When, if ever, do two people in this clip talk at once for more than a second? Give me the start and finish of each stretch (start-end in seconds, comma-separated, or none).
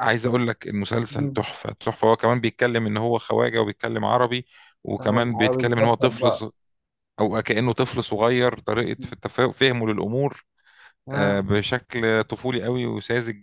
5.0-6.4